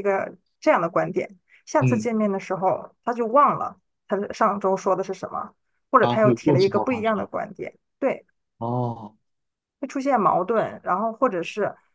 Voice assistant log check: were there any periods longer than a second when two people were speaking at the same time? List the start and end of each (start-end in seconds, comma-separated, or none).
6.0-7.2